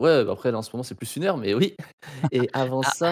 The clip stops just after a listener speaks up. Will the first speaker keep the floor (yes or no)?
yes